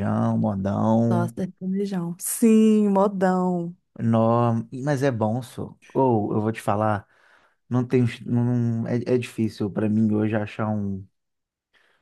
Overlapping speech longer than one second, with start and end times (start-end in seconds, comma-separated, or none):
none